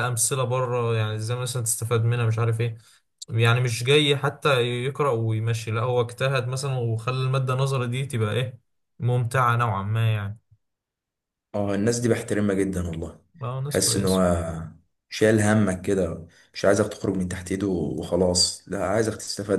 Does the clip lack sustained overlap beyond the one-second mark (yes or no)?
yes